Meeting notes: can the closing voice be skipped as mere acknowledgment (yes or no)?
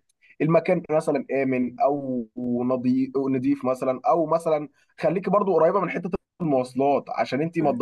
yes